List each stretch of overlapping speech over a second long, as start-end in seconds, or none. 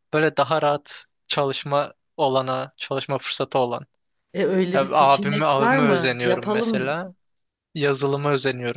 4.8-7.0